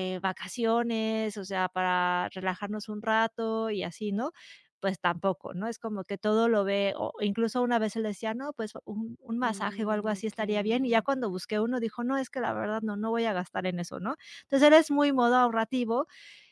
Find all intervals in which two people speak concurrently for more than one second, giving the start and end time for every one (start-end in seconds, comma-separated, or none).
9.4-11.1